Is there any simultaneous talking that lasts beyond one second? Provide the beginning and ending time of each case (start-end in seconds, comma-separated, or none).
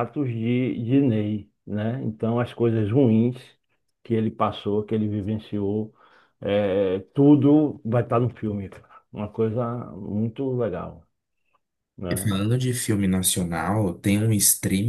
none